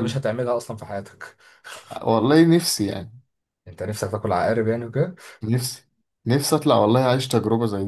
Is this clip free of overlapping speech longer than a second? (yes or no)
yes